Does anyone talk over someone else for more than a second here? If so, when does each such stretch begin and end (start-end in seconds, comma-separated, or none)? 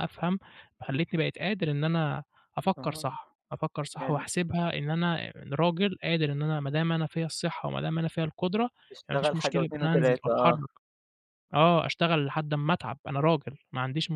9.1-10.6